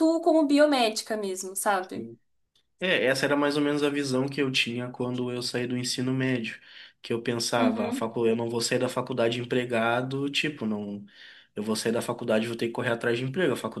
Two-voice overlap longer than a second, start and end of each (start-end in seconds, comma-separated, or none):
none